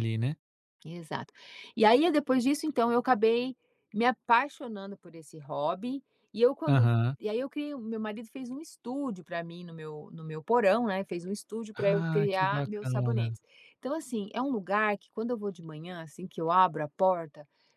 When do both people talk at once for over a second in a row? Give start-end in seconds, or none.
11.7-13.4